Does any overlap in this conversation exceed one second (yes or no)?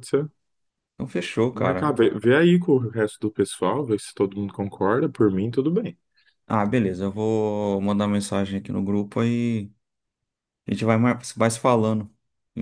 no